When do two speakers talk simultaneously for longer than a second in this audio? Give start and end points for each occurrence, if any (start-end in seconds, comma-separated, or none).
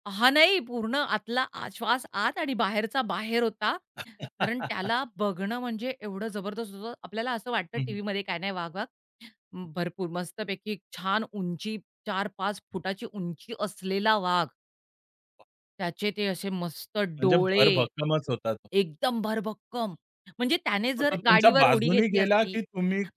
21.0-22.6